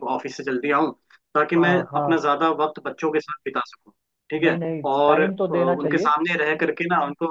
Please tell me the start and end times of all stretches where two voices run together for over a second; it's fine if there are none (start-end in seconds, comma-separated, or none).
4.4-6.1